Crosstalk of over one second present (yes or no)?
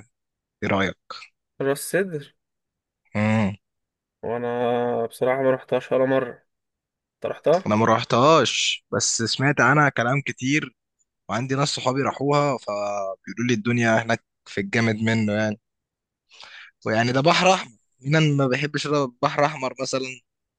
no